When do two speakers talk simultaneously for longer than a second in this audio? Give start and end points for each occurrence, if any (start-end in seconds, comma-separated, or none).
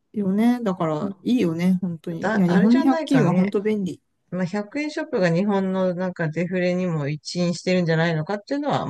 2.2-3.5